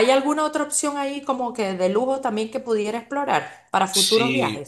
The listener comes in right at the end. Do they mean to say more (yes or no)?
yes